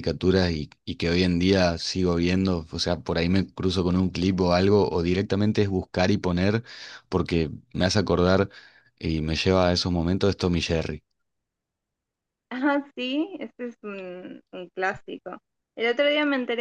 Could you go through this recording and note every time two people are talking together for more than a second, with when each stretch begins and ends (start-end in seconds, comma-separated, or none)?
none